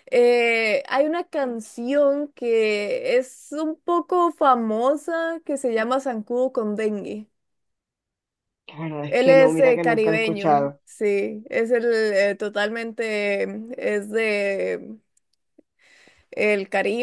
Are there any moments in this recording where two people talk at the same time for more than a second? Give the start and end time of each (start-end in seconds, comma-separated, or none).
9.1-10.8